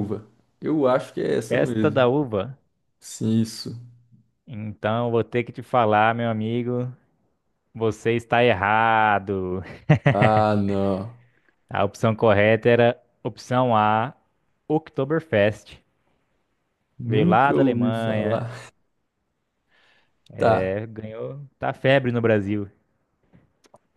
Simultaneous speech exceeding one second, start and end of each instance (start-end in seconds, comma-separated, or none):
17.0-18.5